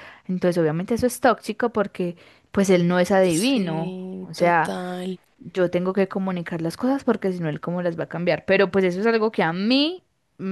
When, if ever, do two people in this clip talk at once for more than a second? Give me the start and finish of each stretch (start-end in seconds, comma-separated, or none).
3.2-4.8